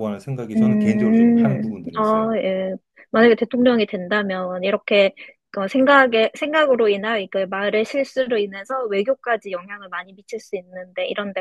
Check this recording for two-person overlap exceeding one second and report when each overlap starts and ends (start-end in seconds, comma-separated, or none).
0.6-2.4